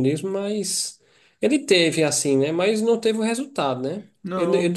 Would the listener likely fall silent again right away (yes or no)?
yes